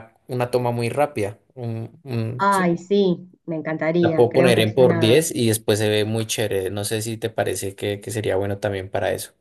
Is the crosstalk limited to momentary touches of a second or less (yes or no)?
no